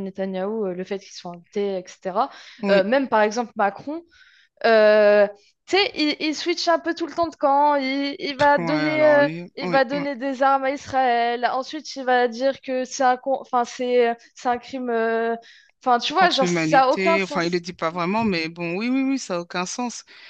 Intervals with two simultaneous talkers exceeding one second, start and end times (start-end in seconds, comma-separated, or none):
8.6-10.1, 16.1-17.6